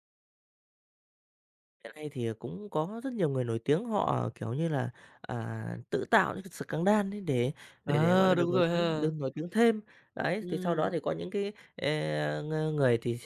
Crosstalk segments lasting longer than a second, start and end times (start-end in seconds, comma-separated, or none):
7.9-9.1